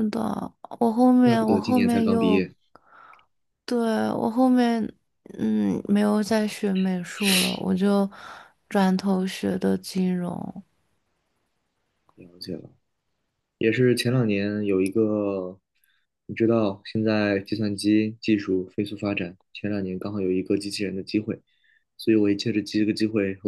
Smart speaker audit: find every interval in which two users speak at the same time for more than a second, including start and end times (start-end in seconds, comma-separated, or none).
1.2-2.5